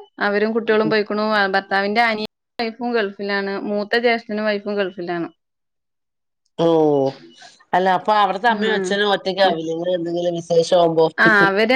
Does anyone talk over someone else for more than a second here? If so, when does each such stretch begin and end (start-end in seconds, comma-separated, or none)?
none